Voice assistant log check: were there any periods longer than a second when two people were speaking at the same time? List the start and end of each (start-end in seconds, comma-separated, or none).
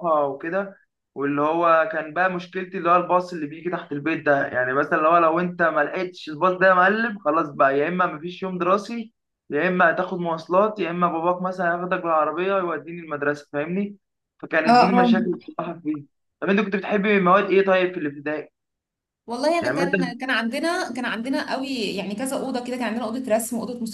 none